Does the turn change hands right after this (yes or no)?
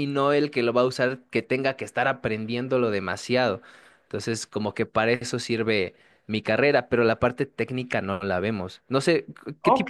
yes